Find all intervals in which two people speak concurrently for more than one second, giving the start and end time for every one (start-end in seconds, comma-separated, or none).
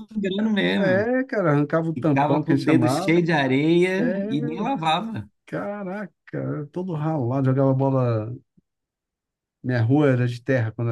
1.9-3.4